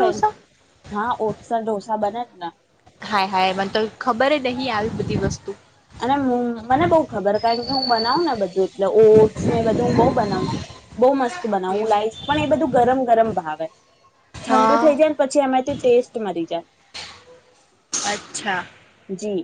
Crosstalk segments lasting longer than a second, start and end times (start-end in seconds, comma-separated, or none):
none